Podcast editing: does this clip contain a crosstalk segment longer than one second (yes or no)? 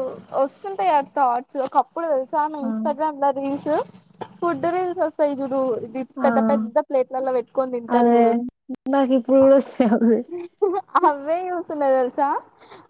no